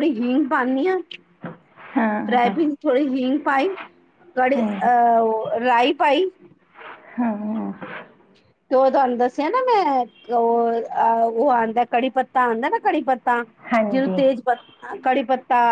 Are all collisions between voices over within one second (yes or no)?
yes